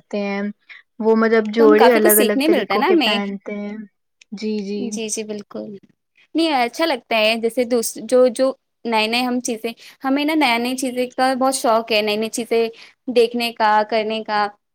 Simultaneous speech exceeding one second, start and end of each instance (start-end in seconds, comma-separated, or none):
1.6-3.2